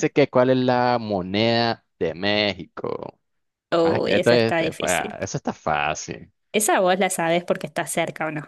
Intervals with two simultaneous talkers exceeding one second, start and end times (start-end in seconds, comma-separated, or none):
3.8-5.2